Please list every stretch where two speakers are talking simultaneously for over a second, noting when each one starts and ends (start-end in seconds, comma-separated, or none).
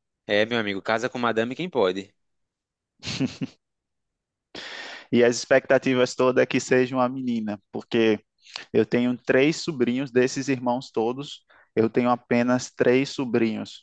none